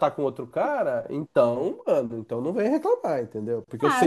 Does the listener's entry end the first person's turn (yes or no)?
no